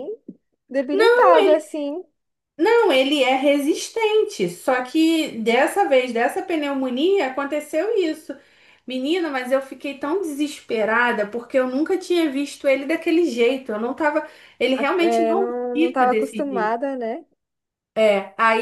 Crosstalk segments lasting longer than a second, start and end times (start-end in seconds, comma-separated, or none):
14.7-16.8